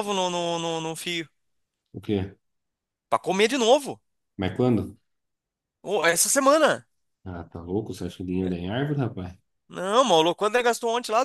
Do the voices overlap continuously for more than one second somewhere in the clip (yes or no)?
no